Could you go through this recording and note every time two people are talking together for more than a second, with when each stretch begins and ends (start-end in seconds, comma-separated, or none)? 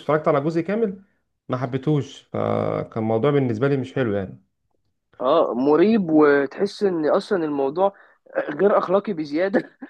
none